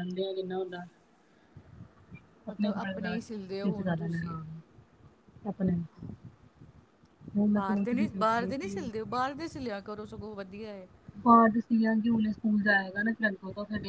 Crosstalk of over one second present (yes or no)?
yes